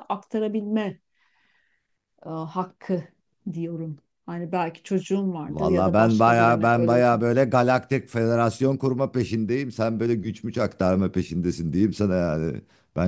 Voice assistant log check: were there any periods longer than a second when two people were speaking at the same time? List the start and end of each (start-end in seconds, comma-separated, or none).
5.5-7.0